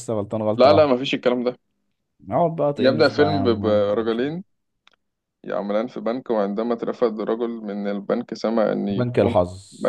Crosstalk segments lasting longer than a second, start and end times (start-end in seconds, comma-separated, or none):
2.8-4.3